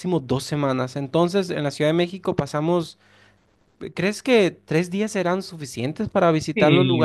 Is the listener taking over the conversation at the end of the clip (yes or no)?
yes